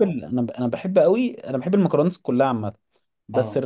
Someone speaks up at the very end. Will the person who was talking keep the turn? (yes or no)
yes